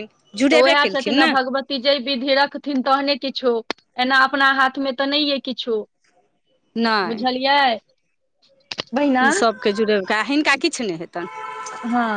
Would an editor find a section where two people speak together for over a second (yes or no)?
no